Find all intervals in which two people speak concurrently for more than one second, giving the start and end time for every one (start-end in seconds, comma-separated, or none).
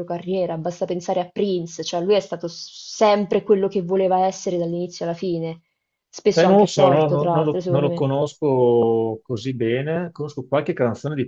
6.3-8.1